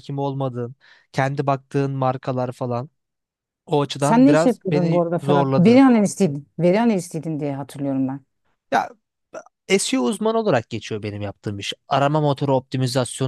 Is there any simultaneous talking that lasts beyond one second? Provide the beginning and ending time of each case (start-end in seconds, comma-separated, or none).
4.0-5.8